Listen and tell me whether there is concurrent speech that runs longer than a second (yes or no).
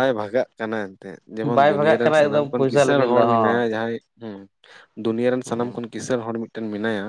yes